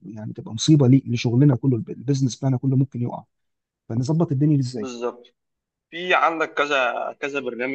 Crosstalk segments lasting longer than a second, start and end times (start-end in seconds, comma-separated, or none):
none